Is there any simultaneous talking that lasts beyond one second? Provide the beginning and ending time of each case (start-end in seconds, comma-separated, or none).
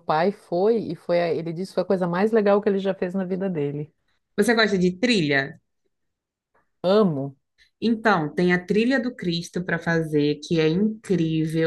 none